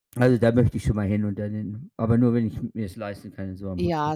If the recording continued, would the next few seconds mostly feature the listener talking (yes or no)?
yes